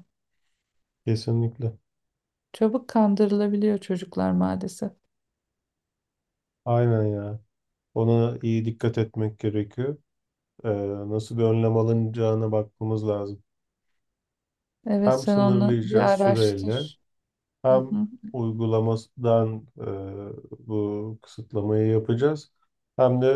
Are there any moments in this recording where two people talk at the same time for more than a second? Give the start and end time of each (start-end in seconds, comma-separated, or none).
15.1-16.9